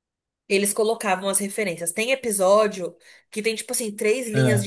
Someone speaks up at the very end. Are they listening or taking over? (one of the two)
listening